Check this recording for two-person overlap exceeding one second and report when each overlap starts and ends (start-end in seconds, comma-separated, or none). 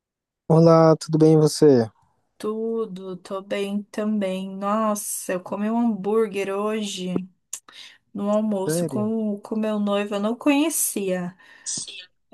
none